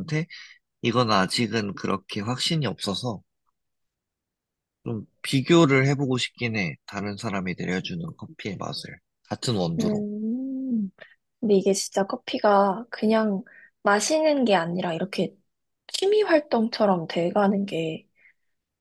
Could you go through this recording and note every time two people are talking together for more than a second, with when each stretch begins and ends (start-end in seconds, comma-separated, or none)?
none